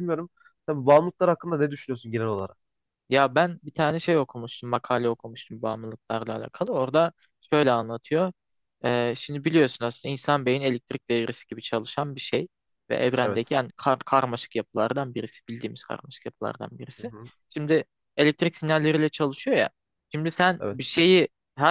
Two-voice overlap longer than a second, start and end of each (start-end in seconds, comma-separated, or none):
none